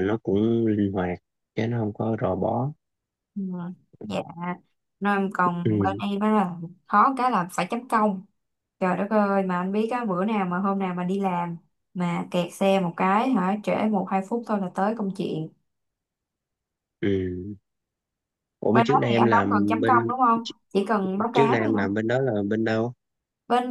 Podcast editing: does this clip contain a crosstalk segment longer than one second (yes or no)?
yes